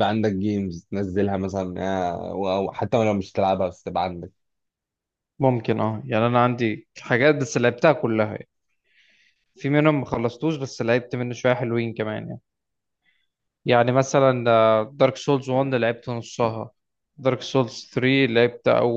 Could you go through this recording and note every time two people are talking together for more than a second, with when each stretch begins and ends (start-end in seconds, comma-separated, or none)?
none